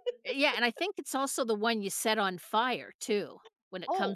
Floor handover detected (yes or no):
yes